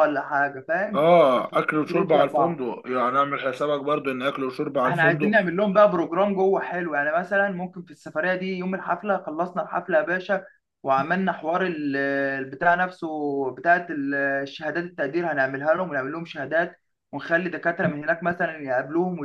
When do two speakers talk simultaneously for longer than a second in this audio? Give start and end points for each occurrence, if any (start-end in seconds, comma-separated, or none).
0.9-2.6